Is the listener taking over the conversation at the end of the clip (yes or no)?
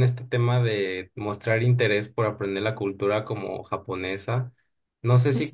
no